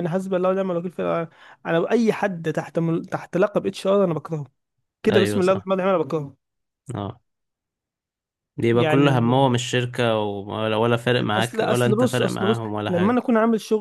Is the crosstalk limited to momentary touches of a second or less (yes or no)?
no